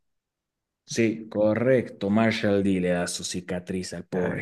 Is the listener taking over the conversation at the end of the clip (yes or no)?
yes